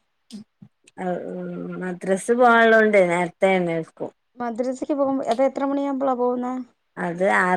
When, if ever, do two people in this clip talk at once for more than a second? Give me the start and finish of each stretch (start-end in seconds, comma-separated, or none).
none